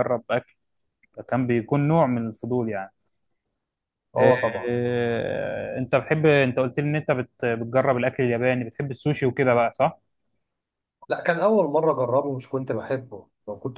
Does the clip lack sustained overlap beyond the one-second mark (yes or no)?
yes